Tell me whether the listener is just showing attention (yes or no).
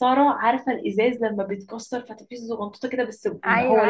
no